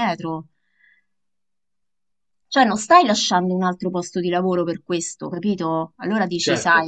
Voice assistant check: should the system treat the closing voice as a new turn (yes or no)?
no